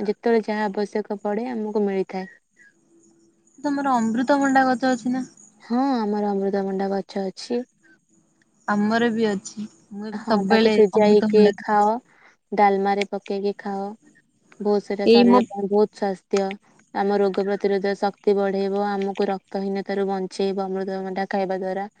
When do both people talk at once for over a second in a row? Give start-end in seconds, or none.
10.2-11.9